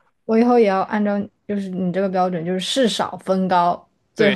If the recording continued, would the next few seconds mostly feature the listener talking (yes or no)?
yes